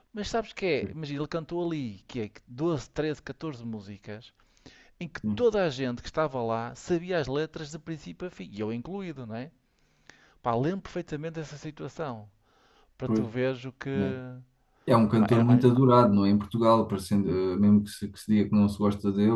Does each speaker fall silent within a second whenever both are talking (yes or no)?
yes